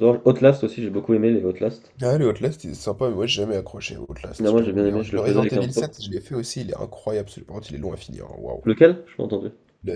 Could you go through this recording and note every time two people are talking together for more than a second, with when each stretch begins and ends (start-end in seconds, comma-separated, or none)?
4.4-5.9